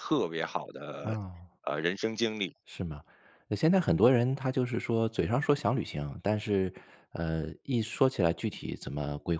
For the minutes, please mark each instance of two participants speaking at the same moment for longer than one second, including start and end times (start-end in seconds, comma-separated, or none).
none